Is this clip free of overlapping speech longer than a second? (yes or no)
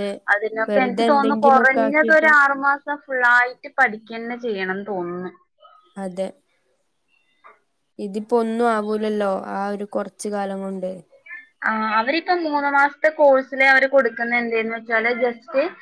no